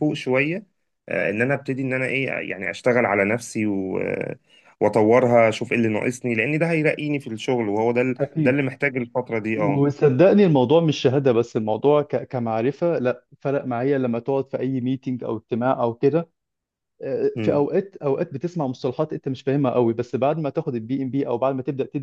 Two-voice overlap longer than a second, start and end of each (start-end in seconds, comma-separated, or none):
none